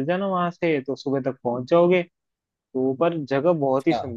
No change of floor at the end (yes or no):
yes